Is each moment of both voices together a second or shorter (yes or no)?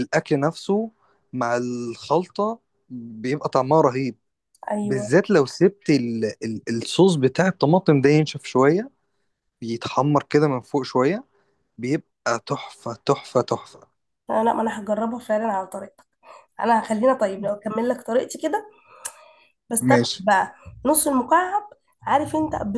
yes